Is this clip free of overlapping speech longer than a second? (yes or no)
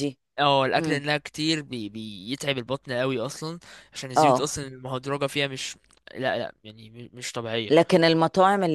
yes